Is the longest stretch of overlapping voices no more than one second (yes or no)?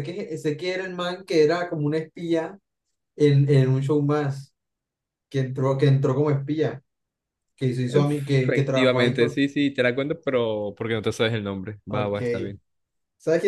no